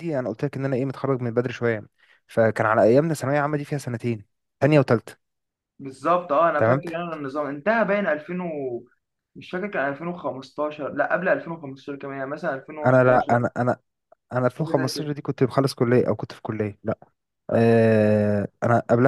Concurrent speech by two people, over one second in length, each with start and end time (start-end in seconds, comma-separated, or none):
none